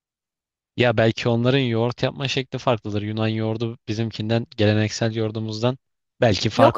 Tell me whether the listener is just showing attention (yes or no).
no